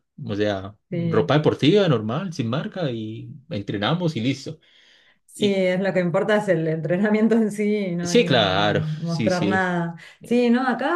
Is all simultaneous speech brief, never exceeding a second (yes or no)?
no